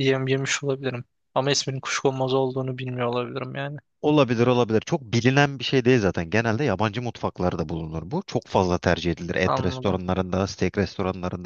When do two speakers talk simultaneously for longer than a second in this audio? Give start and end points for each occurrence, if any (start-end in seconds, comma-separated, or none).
none